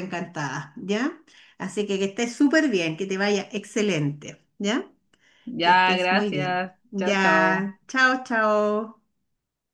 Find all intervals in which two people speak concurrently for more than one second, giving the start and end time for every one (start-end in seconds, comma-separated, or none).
5.6-7.7